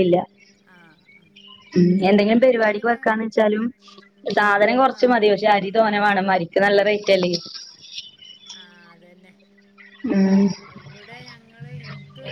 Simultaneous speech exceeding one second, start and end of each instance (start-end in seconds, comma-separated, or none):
none